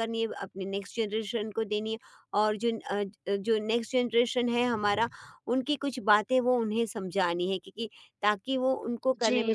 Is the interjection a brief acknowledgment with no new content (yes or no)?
no